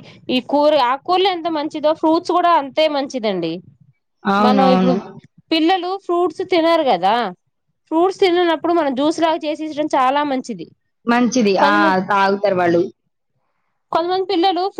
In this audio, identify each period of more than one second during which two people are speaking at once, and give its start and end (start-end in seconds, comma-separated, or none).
none